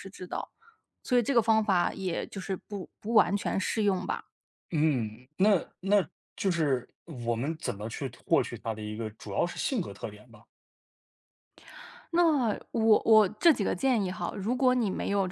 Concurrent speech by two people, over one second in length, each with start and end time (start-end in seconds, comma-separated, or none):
none